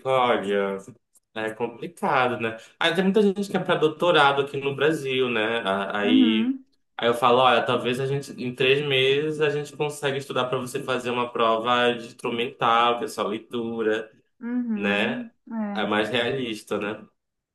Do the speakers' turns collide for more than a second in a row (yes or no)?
no